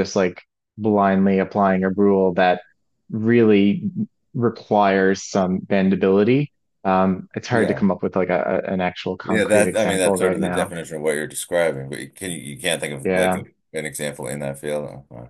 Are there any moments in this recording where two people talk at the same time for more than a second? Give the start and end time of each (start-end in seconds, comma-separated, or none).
9.2-10.7